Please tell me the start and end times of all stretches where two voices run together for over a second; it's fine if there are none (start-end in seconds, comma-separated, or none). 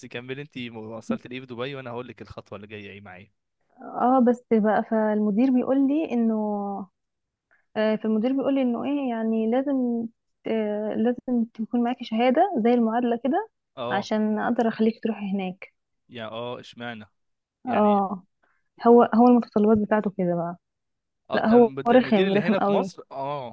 21.3-22.9